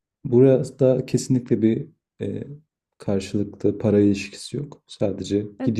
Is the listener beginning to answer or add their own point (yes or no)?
yes